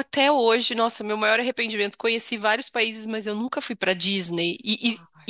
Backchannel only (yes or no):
yes